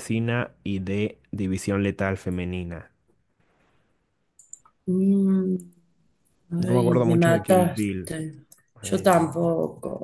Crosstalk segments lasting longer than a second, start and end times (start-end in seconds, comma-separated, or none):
6.7-8.1